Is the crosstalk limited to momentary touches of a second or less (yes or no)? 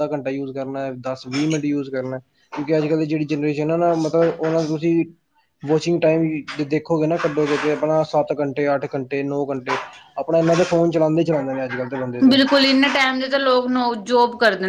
yes